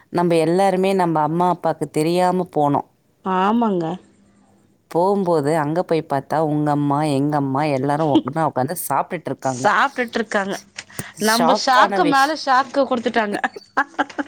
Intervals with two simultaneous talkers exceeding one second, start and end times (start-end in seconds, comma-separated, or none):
none